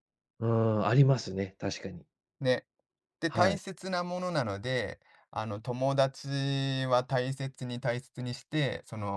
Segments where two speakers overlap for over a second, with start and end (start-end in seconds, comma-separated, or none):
none